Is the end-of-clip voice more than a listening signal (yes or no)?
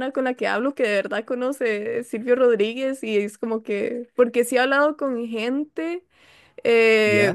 no